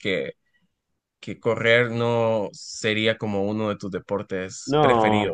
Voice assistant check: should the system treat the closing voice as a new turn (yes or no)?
yes